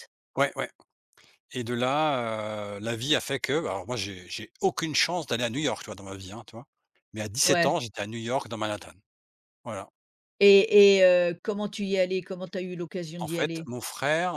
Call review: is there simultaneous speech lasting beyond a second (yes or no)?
no